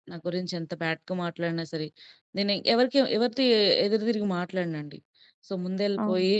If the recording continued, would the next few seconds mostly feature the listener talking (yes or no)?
no